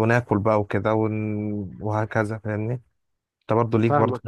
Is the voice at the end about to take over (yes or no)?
no